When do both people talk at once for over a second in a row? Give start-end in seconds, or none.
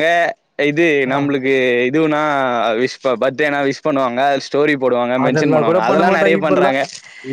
5.2-6.8